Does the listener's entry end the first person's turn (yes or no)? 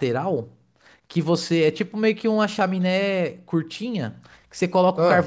no